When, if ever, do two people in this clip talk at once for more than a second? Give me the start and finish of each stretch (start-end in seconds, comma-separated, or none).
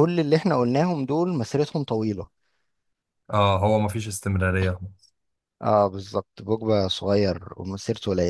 none